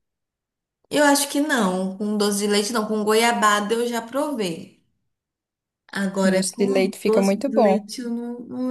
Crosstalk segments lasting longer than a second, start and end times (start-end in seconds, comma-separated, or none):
6.1-7.9